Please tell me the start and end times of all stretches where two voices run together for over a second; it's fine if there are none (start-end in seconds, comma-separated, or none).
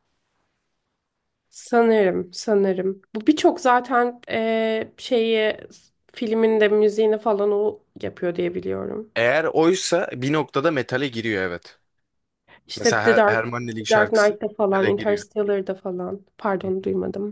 12.8-15.2